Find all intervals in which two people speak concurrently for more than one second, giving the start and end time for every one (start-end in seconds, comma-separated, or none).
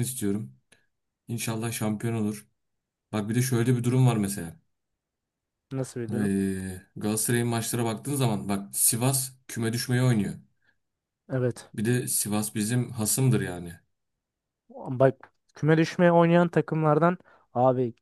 none